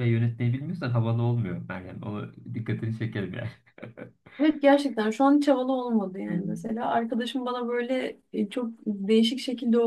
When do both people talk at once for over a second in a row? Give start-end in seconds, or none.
none